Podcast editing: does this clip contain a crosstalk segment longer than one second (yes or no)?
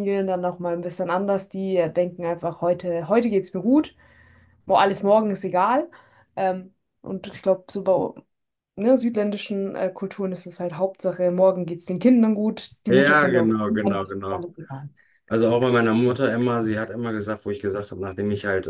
yes